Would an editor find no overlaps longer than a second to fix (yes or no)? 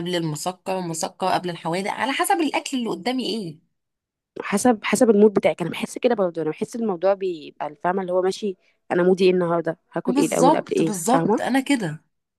no